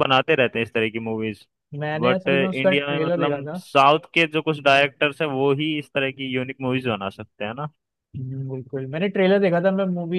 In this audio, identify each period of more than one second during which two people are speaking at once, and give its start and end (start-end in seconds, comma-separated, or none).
2.0-3.6